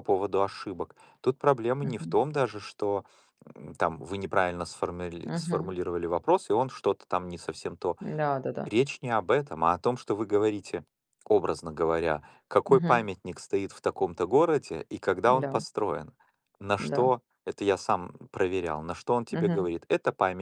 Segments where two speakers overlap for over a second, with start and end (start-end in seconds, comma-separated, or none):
none